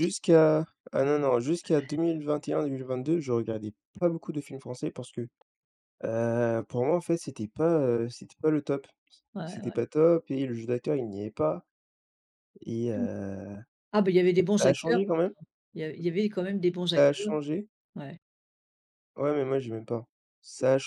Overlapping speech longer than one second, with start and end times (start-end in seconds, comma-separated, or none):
none